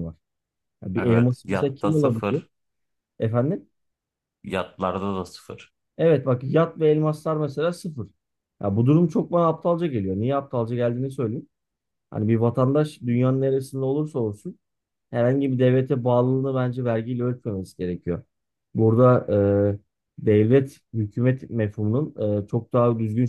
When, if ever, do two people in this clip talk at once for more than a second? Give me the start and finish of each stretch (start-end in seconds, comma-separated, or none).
0.9-2.4